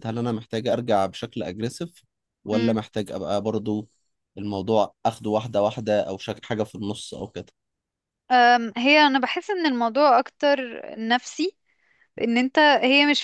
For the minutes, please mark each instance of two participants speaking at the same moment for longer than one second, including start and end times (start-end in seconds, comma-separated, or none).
none